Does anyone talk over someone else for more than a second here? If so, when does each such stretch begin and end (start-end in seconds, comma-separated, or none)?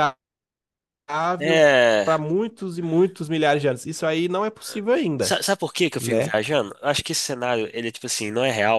none